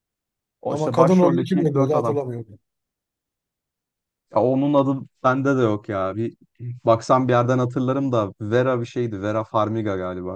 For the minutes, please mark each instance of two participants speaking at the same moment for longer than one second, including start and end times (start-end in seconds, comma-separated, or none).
0.7-2.2